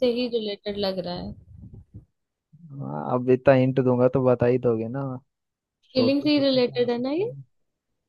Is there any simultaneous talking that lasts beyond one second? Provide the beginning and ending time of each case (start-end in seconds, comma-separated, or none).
6.0-7.3